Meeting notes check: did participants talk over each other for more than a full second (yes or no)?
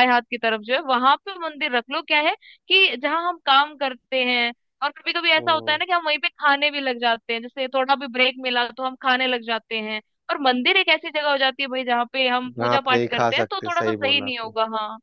yes